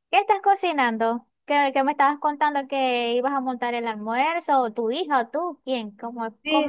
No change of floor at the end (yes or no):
no